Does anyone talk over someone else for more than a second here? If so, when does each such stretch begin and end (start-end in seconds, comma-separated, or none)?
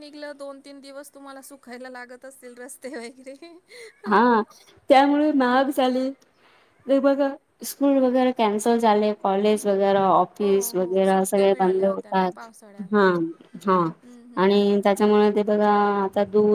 10.4-12.5